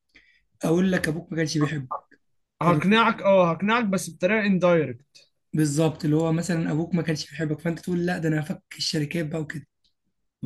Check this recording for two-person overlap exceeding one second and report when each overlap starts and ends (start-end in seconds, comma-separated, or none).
none